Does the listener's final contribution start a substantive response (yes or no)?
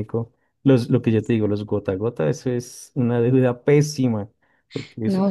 yes